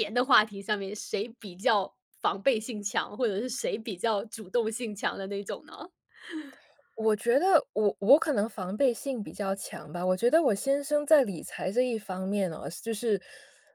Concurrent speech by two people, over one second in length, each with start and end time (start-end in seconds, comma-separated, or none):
none